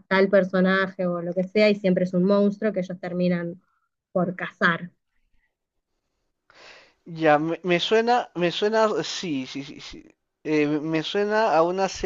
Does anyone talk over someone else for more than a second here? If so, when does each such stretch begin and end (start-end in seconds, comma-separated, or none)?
none